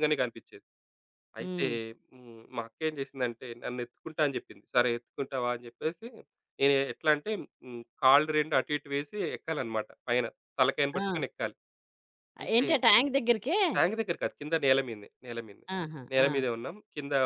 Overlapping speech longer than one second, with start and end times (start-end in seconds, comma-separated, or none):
none